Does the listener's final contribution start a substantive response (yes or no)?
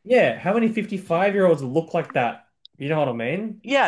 yes